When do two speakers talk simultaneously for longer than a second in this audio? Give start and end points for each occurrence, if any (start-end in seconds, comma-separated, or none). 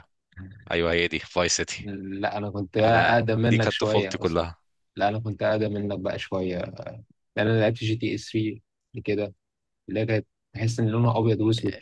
2.9-4.5